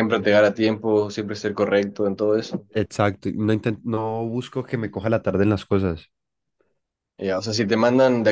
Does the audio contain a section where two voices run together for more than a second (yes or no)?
no